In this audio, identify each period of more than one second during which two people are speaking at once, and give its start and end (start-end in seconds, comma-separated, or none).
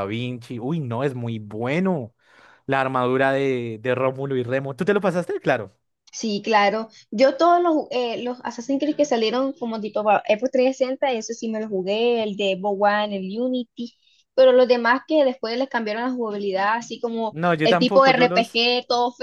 17.3-18.6